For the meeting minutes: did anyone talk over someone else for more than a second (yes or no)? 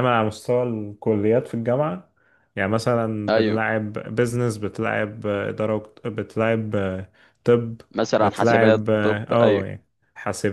yes